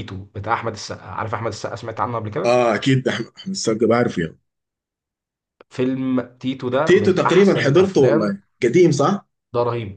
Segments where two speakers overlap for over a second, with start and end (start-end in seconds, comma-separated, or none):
6.8-8.3